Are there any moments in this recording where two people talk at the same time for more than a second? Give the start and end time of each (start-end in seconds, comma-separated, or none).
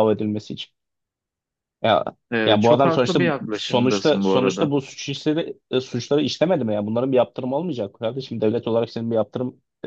2.5-4.7